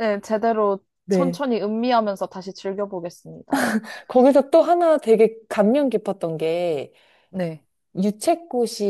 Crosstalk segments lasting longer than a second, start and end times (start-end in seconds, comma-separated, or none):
none